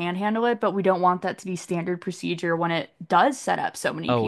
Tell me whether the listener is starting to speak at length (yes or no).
yes